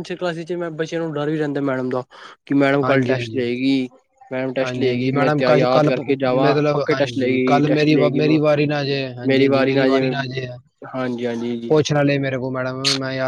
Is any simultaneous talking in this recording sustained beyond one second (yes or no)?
yes